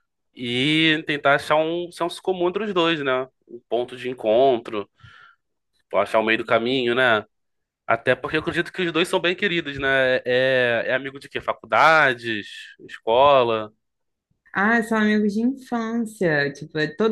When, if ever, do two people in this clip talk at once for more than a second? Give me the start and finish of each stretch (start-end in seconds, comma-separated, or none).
none